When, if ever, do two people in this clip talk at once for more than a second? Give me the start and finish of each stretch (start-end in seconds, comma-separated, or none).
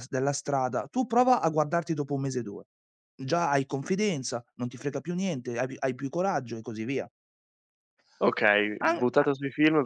none